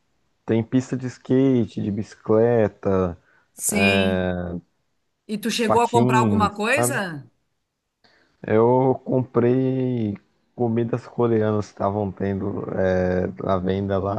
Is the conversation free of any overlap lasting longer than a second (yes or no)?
no